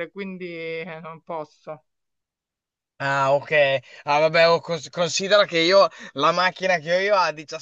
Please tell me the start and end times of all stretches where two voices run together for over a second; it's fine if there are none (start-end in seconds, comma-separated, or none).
none